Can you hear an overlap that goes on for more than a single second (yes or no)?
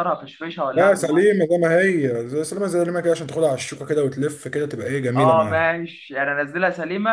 no